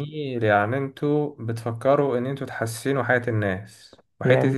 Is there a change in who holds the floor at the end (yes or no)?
no